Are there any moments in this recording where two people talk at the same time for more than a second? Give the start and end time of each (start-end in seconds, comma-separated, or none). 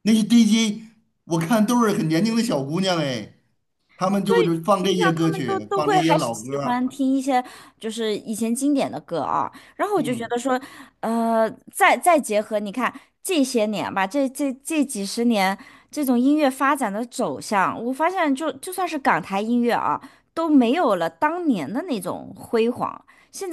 4.3-6.9